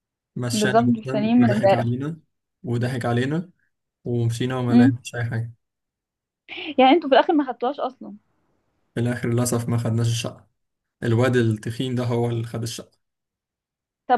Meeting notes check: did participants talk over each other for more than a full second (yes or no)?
yes